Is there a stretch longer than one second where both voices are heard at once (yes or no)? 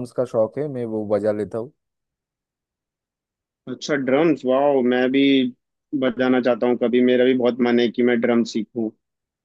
no